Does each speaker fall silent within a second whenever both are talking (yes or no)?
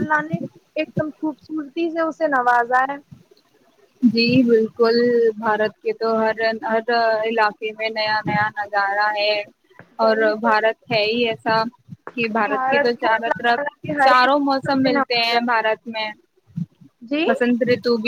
no